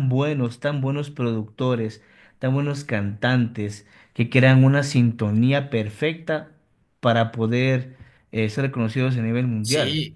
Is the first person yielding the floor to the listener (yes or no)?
no